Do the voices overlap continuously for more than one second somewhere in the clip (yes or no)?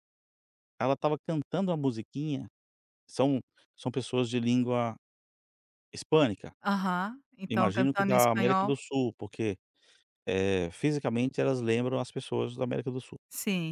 yes